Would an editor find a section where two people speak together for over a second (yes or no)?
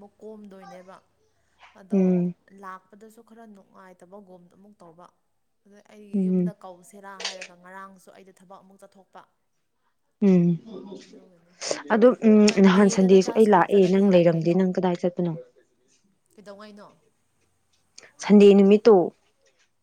yes